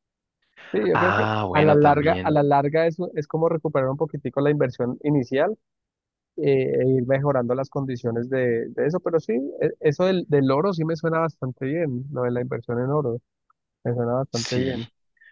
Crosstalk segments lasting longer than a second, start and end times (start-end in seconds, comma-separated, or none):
0.9-2.4